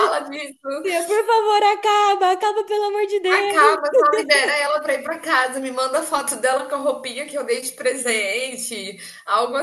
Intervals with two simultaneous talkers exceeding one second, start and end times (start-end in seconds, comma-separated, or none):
none